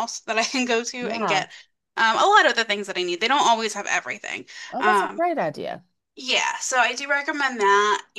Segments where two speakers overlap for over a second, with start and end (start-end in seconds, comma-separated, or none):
none